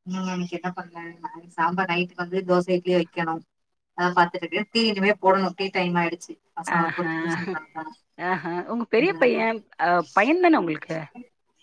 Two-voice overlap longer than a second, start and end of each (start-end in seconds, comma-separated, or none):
none